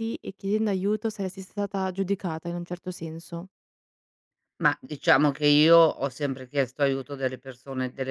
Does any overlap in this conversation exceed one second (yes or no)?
no